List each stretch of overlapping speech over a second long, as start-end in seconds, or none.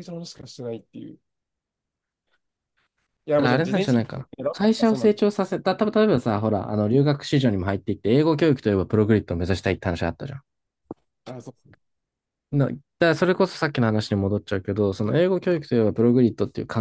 3.4-5.2